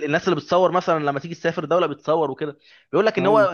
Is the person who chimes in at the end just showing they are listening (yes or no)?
yes